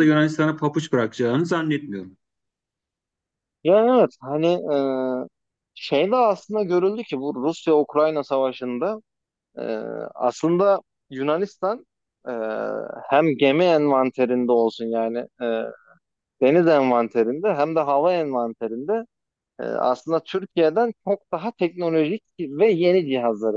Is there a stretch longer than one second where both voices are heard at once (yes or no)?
no